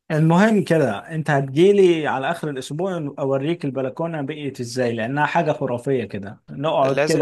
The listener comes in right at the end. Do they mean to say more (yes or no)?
no